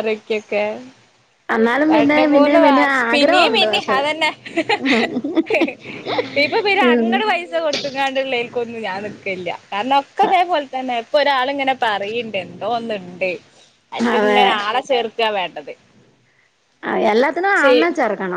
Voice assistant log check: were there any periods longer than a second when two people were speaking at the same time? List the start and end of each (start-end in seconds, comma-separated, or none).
1.9-4.0